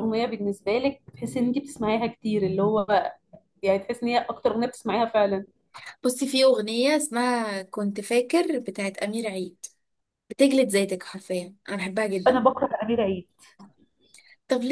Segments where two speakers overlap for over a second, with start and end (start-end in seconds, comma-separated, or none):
none